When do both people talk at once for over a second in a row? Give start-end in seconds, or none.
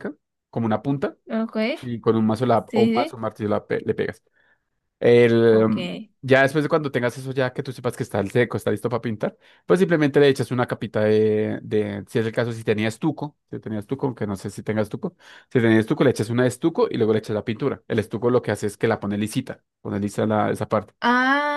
none